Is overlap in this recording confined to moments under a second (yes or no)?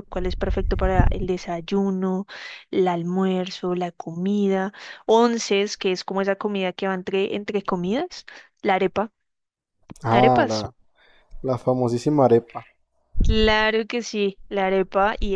yes